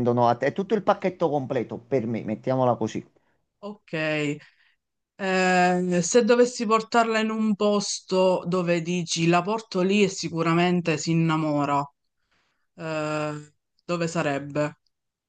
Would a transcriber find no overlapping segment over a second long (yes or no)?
yes